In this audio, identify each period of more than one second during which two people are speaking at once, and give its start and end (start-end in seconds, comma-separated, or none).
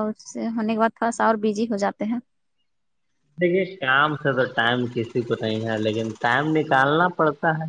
none